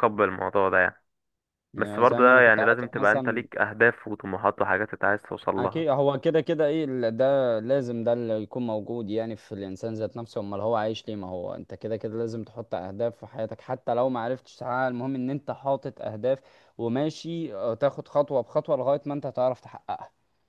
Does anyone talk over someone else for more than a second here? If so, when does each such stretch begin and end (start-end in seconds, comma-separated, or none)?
1.8-3.5